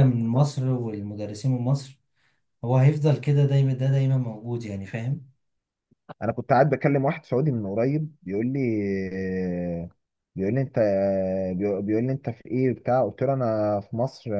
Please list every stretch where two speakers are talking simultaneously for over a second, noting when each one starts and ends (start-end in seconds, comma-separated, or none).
none